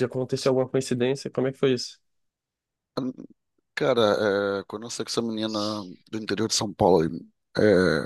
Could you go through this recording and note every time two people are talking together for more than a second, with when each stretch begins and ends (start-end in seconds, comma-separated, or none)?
none